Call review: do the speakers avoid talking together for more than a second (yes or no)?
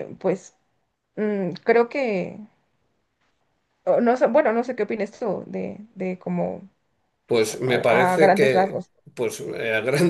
no